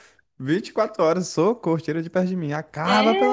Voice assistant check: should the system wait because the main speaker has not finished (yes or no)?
no